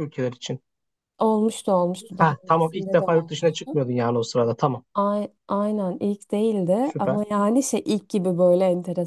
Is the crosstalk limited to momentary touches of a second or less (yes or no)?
no